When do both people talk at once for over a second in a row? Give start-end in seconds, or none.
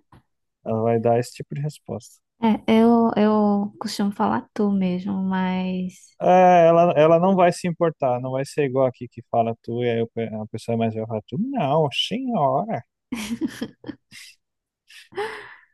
none